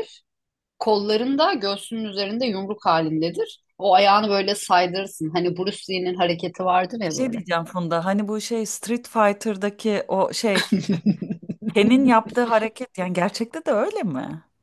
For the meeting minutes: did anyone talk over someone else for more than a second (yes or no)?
no